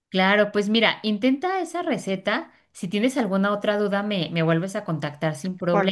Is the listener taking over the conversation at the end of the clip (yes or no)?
yes